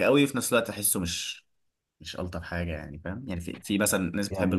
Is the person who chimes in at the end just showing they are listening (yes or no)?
yes